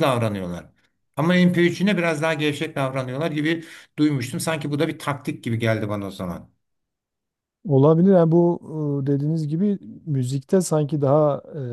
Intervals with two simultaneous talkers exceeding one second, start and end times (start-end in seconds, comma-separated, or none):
none